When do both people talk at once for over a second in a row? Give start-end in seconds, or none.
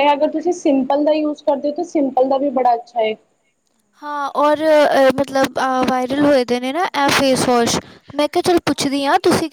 none